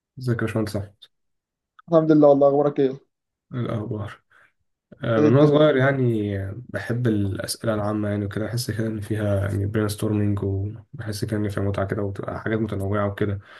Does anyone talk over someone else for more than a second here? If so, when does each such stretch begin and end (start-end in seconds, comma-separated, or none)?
none